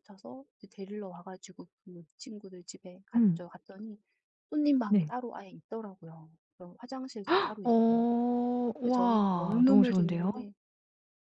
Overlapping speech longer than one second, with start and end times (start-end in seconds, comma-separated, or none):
8.8-10.3